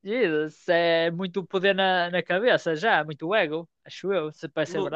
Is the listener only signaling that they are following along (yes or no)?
no